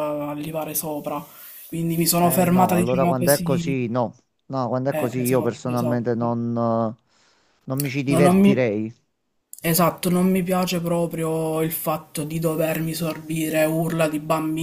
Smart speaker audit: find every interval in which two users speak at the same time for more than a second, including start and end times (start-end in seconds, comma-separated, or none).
2.2-3.8, 4.9-6.1